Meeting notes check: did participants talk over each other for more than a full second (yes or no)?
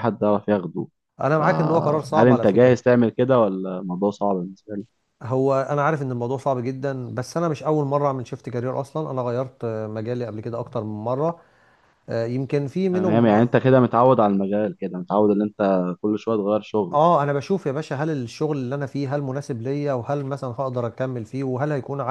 yes